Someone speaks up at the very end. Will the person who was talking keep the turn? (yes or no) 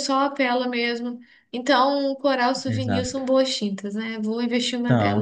no